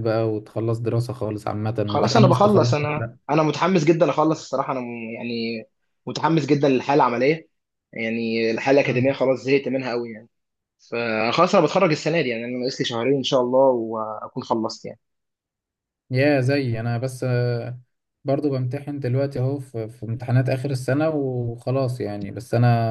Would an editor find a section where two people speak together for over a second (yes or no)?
yes